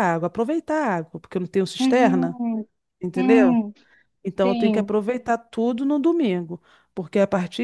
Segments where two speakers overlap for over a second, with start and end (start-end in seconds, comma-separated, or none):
none